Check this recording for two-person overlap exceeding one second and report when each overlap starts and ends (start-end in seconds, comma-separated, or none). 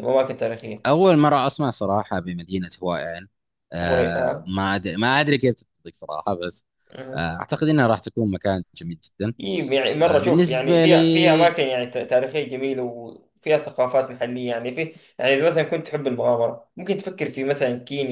10.0-11.6